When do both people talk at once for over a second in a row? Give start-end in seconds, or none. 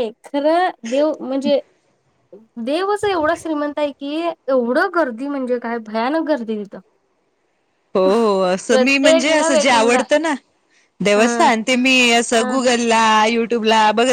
8.7-10.0